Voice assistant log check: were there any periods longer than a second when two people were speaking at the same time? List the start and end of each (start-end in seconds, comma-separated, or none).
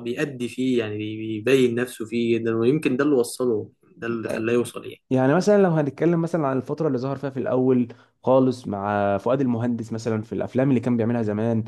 none